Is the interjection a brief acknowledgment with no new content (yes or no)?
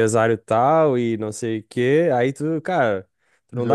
yes